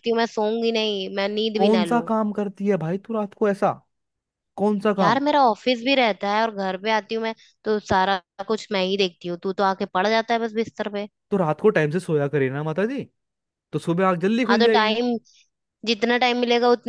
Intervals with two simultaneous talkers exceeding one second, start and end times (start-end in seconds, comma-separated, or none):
none